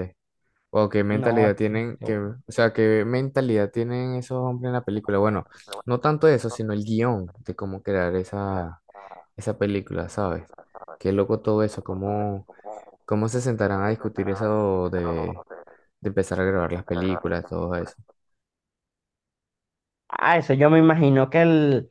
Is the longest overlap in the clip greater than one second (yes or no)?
yes